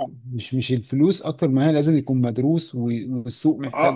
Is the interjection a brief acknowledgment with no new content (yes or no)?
no